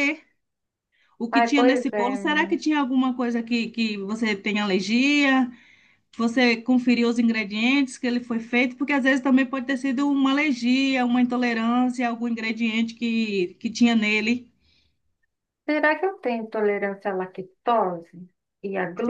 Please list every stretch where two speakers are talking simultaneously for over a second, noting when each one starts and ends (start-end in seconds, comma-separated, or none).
1.3-2.6